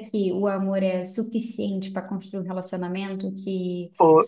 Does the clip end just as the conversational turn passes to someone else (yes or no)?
no